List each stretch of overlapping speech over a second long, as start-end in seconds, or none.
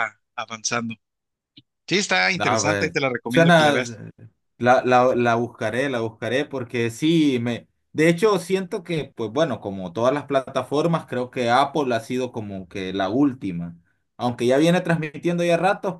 2.4-4.0